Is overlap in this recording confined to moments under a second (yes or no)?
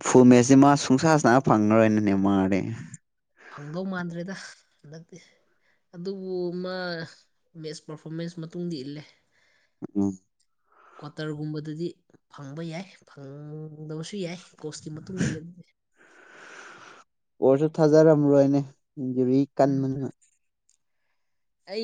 yes